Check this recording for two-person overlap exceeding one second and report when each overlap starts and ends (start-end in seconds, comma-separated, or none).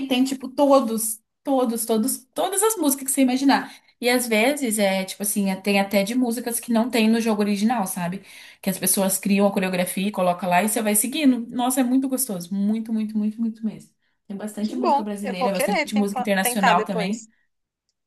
14.6-17.3